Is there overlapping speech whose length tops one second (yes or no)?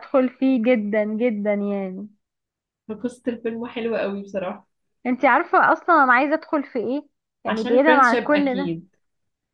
yes